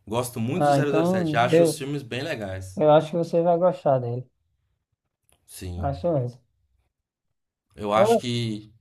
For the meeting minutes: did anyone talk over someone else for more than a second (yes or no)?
yes